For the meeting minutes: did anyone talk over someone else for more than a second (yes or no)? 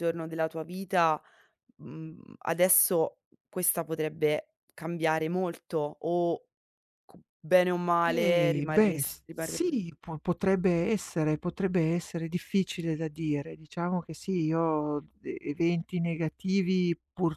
yes